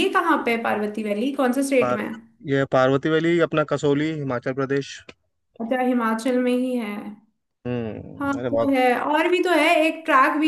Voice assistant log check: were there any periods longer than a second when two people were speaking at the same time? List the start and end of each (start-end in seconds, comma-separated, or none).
none